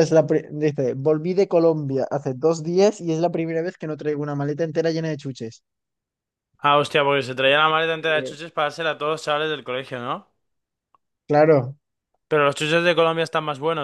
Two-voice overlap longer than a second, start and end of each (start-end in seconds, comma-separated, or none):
none